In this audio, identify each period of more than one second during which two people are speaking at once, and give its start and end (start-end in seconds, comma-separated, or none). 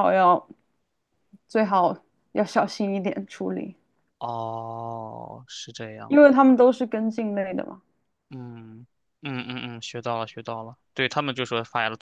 none